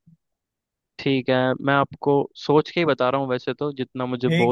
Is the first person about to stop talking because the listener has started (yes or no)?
yes